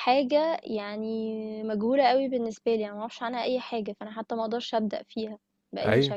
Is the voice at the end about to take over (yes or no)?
yes